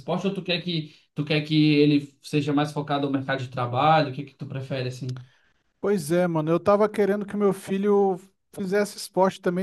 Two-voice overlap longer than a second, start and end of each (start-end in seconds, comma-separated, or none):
none